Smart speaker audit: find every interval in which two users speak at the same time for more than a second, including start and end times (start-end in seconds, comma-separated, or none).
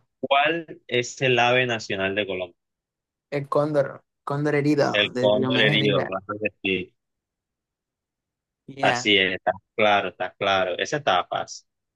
4.9-6.1